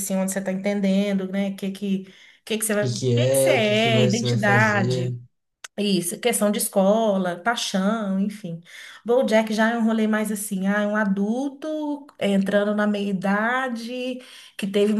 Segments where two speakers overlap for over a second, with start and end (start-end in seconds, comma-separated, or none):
2.8-5.1